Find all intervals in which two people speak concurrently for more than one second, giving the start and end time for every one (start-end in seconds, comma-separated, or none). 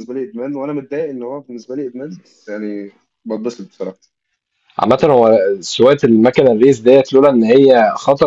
none